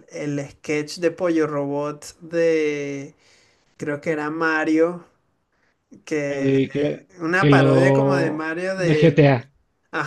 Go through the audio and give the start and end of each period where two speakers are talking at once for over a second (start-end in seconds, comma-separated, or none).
6.3-9.3